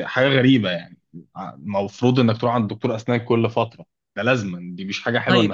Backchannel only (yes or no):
no